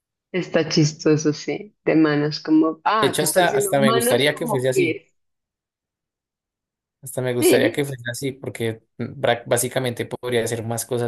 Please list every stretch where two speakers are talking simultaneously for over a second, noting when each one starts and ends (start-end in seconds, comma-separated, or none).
3.0-5.0